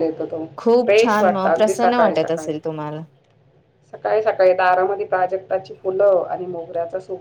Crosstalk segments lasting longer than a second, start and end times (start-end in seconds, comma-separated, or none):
0.8-2.6